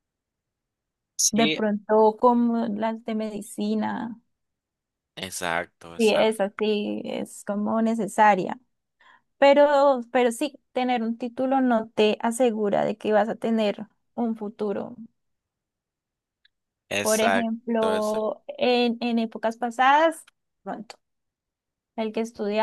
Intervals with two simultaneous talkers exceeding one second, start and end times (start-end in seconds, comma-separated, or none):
17.0-18.3